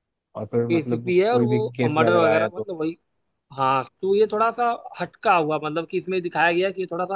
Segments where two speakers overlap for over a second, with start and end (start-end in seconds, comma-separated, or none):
0.7-2.7